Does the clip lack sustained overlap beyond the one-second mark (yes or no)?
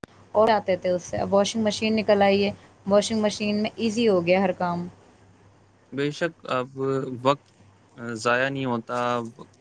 yes